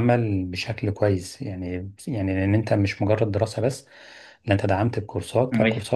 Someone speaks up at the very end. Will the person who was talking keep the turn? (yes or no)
yes